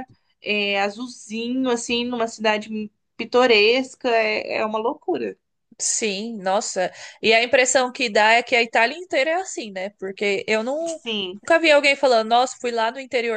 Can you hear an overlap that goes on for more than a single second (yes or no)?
no